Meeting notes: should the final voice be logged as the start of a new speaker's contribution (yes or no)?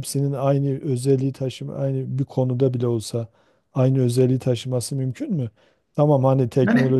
yes